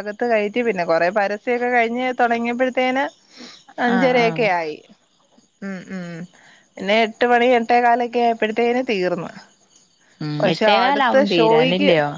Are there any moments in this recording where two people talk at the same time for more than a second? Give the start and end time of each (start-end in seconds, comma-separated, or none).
none